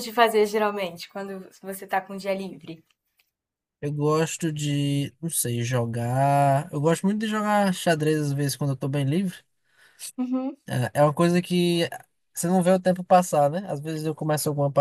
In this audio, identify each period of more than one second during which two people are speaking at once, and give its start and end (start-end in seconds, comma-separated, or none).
none